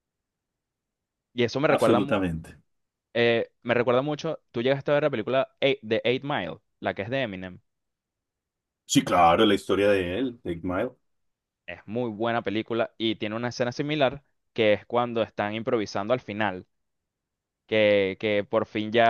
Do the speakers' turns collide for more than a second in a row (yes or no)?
no